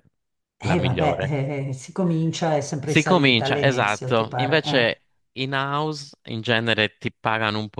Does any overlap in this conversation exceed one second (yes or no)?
yes